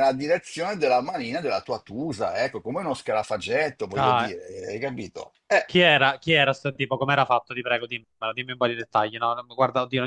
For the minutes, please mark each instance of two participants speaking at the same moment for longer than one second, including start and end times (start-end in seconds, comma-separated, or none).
none